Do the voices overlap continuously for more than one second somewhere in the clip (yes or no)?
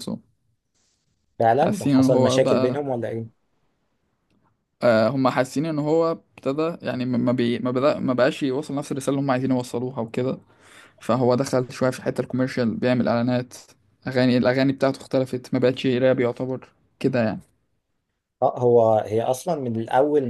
yes